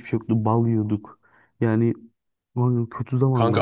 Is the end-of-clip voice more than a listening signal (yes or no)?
yes